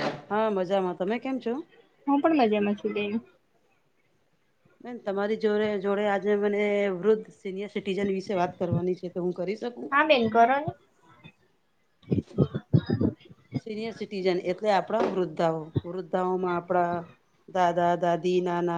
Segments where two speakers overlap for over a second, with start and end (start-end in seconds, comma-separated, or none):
none